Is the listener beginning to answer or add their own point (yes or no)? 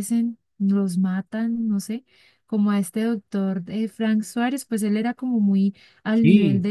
no